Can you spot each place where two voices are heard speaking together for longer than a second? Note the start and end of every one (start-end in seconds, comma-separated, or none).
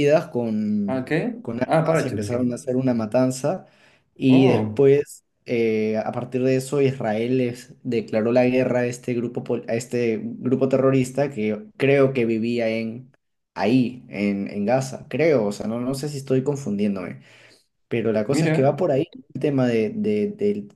0.9-2.5